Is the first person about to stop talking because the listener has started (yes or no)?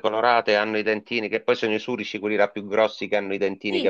yes